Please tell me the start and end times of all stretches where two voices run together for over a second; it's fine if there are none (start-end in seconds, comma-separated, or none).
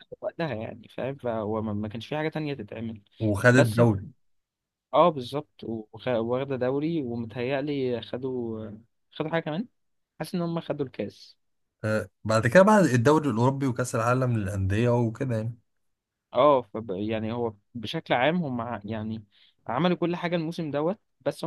none